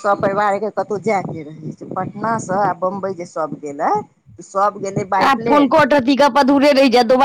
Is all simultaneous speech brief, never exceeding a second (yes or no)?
yes